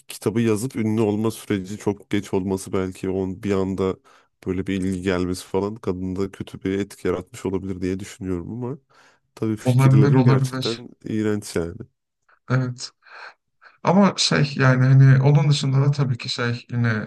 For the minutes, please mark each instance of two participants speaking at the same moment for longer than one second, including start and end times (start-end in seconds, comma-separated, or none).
9.6-10.8